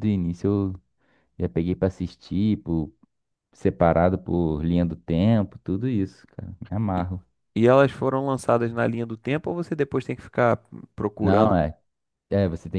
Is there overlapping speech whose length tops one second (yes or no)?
no